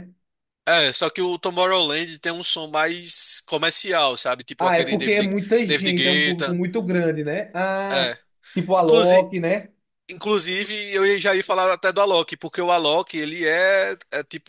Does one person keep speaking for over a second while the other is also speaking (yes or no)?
yes